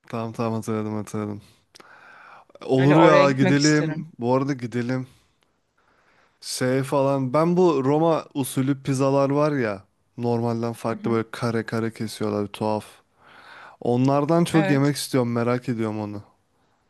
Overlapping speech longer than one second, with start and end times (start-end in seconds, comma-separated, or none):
2.8-4.0